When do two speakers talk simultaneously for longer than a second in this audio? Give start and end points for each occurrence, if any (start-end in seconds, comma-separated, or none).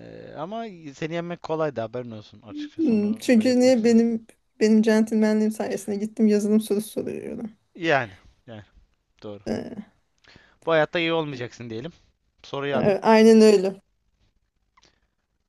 2.8-4.0